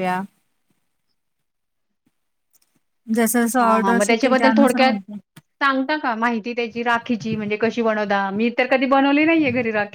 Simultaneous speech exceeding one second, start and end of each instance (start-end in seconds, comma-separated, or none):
3.6-4.9